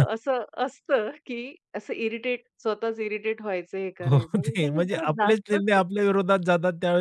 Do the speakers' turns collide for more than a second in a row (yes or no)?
yes